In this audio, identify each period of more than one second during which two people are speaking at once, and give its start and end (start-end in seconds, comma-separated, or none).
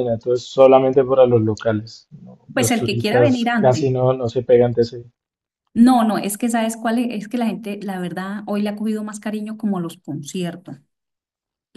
2.5-3.9